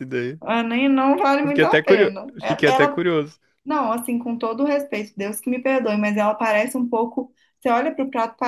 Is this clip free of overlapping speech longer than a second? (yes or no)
no